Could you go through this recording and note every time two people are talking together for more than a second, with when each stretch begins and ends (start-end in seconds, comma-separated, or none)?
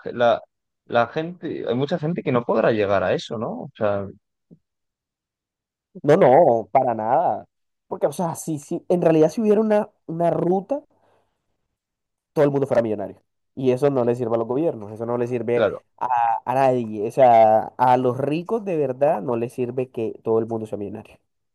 none